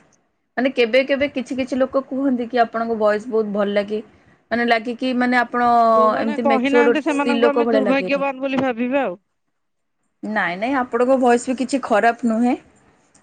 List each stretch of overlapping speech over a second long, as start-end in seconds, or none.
6.2-8.2